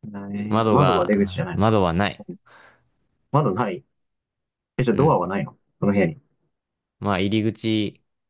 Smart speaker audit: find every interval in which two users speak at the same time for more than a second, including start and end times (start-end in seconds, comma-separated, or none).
0.5-1.8